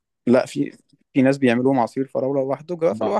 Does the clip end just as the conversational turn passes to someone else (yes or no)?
yes